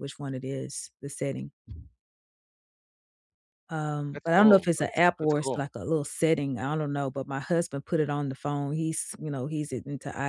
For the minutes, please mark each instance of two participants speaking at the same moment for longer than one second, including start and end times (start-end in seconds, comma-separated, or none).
4.1-5.6